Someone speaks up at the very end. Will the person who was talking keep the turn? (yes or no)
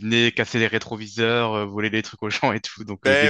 no